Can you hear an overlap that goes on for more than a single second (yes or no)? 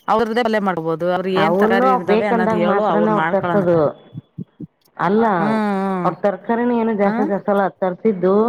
yes